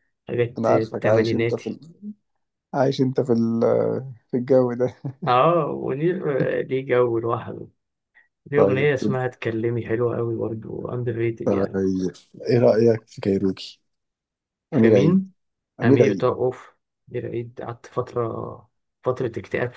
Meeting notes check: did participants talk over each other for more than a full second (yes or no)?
yes